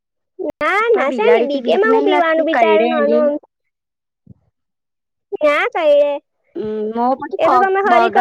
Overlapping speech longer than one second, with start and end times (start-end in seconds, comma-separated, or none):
0.9-3.3